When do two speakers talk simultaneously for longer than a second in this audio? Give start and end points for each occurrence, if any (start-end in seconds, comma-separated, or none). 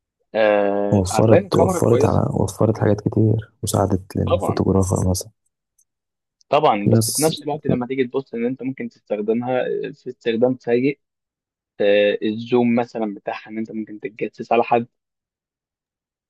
0.9-2.2